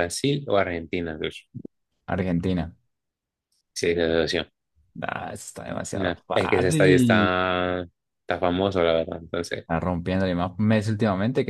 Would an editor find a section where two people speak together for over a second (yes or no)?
yes